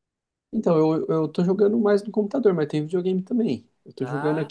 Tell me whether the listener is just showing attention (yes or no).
yes